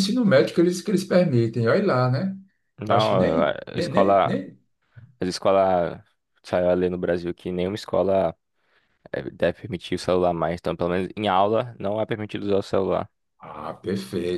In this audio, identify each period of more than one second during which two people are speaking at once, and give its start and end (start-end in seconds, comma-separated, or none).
2.9-4.4